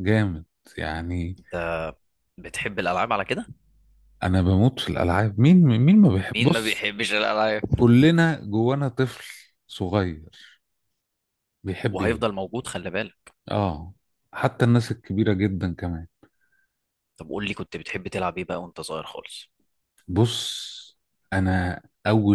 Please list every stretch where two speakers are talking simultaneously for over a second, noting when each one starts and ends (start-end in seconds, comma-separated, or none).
none